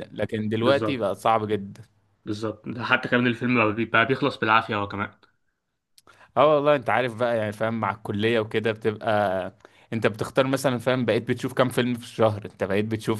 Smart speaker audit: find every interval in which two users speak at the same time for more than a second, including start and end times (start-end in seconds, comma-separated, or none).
none